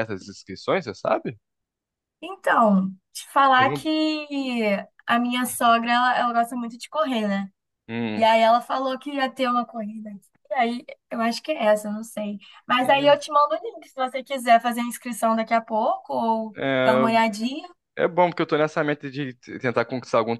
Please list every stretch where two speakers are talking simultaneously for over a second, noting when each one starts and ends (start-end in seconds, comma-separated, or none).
none